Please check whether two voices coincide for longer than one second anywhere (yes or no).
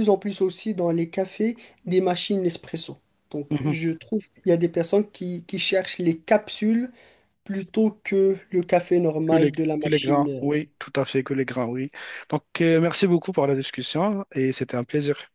yes